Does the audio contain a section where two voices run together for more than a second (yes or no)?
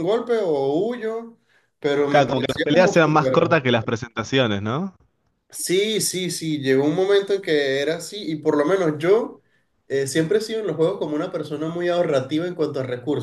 yes